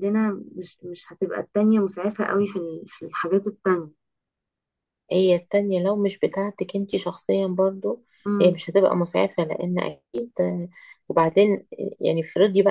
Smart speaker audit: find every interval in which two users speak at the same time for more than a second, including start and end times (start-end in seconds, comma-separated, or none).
none